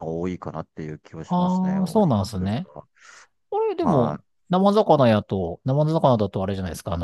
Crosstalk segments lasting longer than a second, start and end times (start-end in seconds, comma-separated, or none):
1.2-2.7